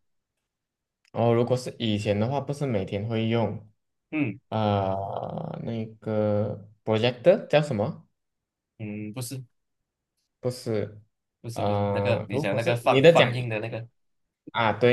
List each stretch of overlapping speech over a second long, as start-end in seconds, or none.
11.5-13.3